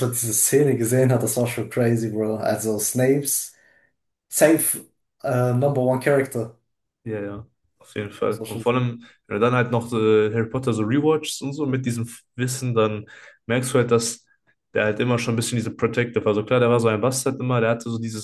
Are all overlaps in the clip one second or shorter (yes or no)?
yes